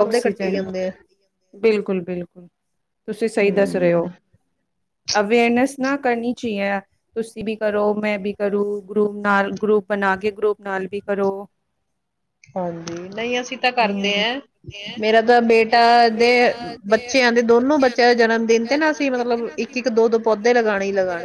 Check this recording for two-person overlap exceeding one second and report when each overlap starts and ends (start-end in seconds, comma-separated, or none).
none